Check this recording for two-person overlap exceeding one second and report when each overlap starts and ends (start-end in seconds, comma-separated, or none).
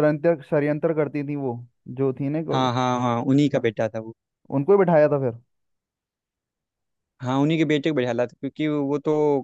none